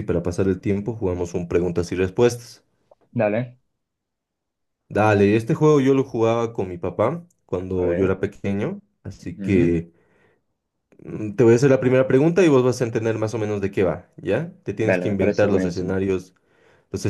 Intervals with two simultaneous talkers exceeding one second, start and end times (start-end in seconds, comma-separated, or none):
14.8-16.0